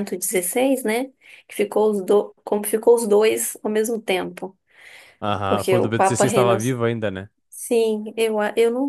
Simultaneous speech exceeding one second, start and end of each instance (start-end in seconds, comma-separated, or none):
5.5-6.8